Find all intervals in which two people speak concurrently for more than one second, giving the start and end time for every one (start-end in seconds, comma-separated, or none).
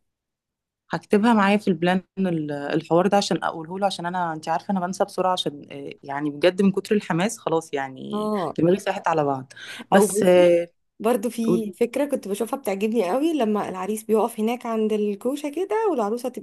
none